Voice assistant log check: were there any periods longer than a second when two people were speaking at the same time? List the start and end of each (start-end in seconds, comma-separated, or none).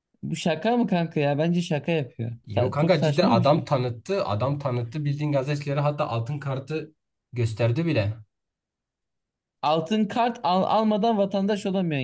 2.5-3.6